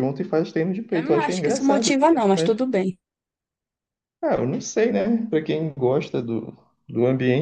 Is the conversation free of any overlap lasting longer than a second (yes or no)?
no